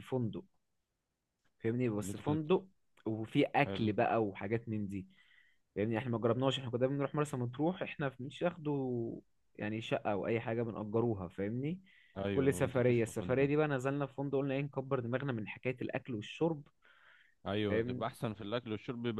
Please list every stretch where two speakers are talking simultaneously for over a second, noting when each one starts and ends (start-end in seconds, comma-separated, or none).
12.2-13.5